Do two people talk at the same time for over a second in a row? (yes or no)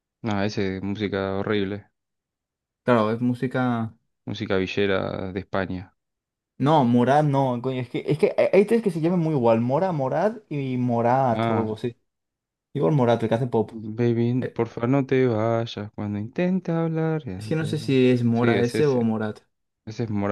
yes